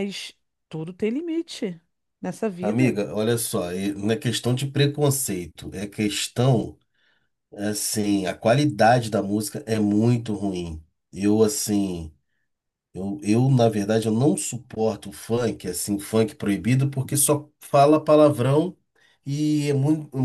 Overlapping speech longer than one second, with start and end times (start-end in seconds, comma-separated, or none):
none